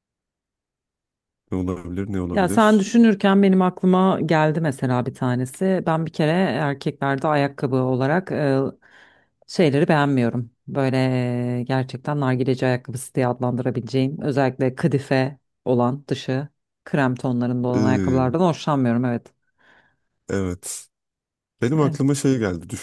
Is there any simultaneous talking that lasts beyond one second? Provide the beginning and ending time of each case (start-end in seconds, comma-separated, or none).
none